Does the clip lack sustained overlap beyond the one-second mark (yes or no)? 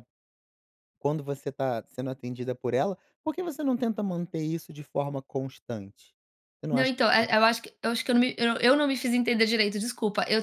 yes